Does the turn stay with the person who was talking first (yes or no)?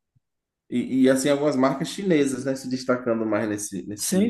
no